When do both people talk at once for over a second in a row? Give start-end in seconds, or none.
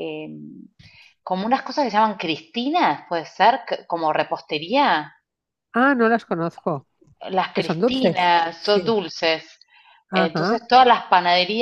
7.5-9.0